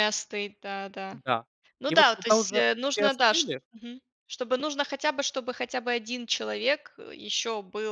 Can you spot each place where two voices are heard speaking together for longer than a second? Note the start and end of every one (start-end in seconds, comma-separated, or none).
1.9-3.6